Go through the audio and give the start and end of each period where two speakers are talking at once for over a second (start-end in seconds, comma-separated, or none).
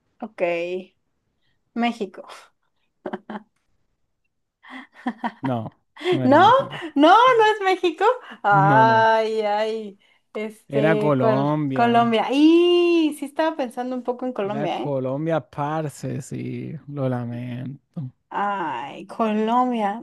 10.7-12.1